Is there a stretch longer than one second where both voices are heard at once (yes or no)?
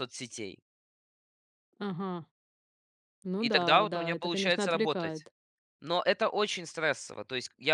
yes